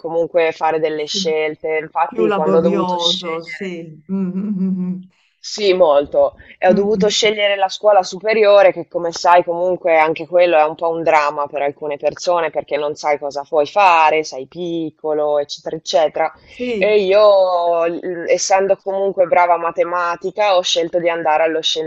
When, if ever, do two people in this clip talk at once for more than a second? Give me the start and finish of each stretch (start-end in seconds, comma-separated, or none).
2.0-3.7